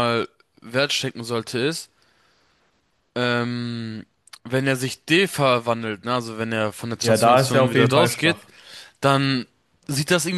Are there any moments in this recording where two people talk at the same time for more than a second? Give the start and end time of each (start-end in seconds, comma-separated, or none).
7.0-8.4